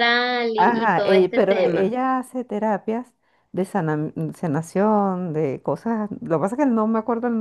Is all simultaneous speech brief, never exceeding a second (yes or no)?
no